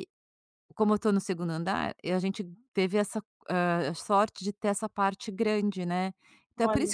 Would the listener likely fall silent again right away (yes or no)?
yes